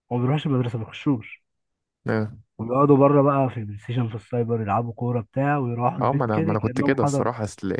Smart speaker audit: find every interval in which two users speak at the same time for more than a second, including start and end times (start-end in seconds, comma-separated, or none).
6.0-7.3